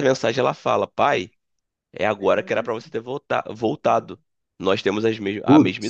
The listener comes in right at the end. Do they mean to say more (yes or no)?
no